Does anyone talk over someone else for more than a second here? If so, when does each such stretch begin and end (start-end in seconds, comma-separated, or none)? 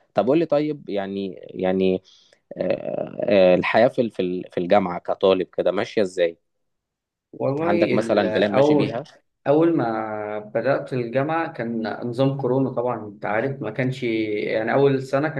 7.6-9.0